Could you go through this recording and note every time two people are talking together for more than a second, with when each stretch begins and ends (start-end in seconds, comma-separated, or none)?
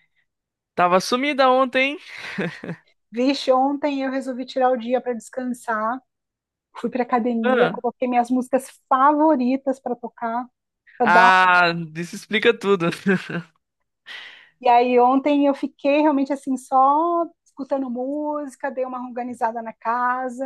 none